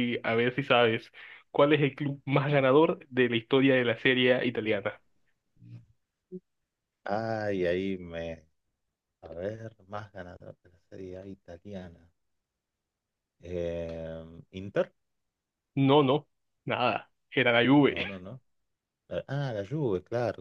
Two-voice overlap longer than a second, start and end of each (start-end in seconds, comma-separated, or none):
none